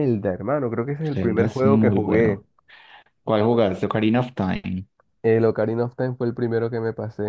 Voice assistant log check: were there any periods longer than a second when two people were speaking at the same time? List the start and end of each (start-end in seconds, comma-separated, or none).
1.1-2.4